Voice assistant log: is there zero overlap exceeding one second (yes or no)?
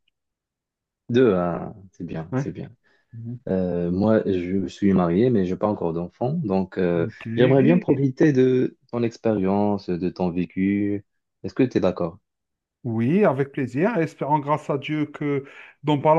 yes